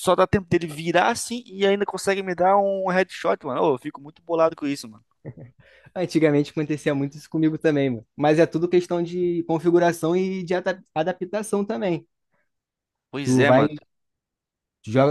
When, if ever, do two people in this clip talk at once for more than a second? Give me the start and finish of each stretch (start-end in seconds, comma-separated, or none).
none